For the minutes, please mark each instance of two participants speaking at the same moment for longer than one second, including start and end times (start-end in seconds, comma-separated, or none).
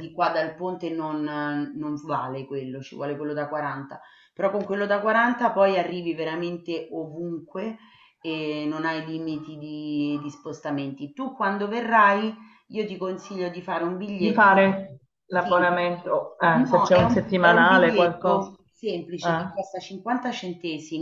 16.5-18.5